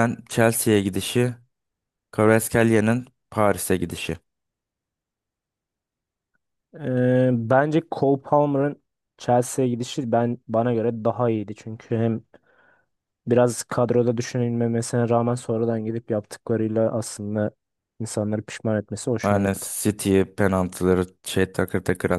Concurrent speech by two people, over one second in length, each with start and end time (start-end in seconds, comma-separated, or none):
none